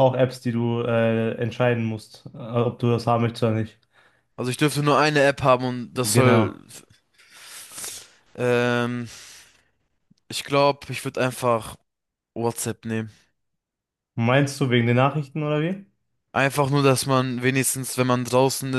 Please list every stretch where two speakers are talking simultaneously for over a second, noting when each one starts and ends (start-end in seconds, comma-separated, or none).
none